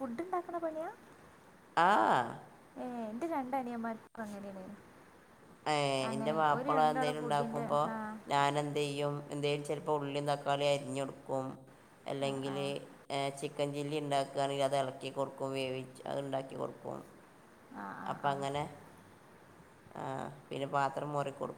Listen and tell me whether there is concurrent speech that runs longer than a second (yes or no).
yes